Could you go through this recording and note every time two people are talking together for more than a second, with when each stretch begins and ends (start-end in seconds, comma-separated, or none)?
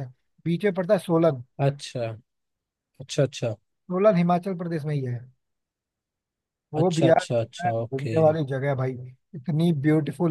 6.8-8.2